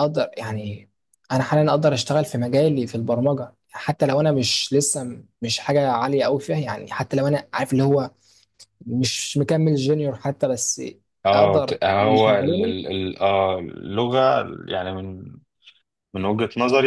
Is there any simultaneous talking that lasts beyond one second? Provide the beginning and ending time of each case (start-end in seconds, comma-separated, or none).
11.3-12.8